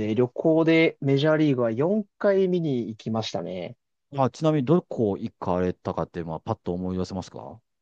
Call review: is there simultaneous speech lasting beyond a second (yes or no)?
no